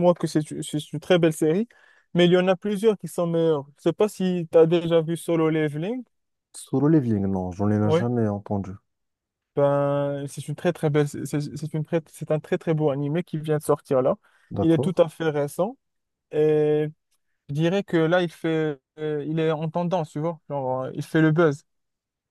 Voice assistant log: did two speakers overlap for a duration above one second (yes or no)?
no